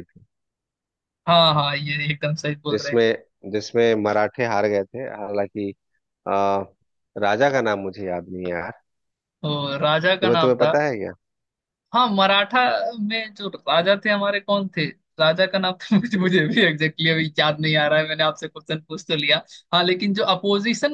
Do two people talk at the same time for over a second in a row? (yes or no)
no